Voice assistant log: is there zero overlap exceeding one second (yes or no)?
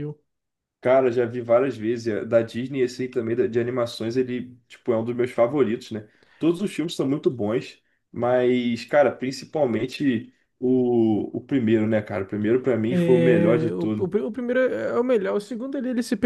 no